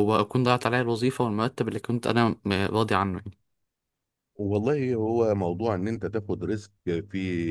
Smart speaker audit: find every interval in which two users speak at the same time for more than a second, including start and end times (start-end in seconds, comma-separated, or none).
none